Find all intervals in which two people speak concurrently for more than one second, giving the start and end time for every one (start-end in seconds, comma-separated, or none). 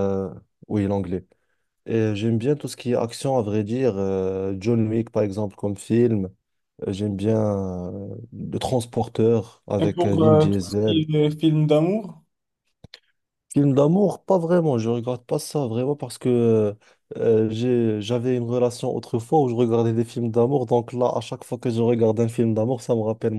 9.8-11.0